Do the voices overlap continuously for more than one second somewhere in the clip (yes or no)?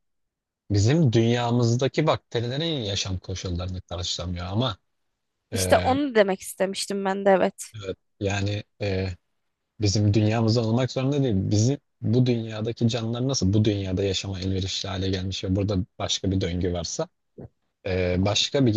no